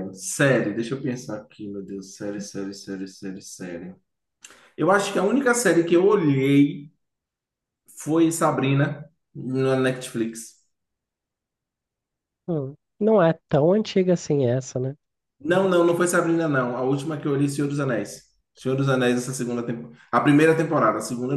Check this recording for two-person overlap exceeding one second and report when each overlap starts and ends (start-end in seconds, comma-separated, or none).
none